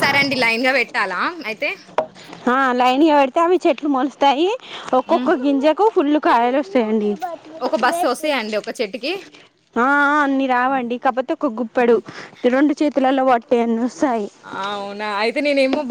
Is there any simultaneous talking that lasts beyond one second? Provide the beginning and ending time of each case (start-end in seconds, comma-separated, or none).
none